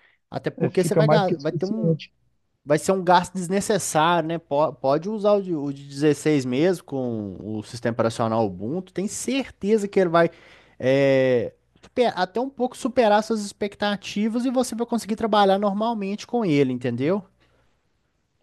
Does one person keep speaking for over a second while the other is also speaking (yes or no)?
yes